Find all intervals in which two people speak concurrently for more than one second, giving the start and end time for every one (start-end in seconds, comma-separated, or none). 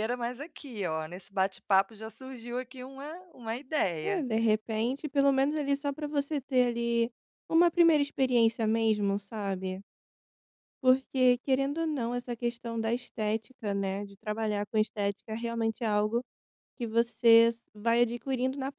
none